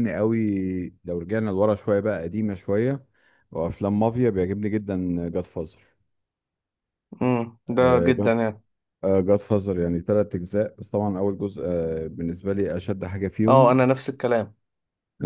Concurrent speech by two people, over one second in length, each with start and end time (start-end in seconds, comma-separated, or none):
none